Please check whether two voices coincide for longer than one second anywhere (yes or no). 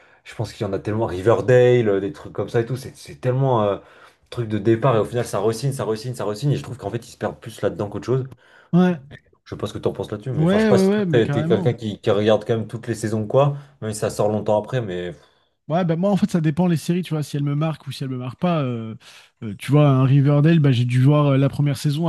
yes